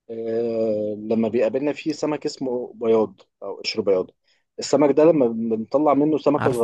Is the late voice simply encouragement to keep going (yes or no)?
yes